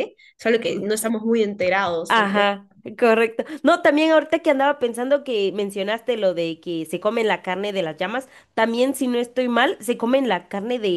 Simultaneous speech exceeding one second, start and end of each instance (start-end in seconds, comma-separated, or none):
none